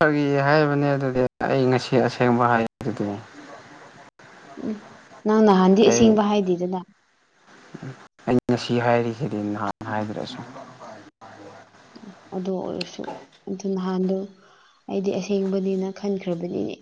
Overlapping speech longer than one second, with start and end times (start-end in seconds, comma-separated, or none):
none